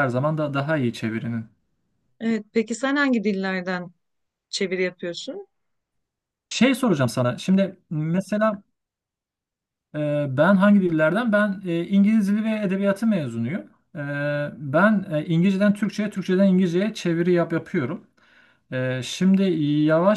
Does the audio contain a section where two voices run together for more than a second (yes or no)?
no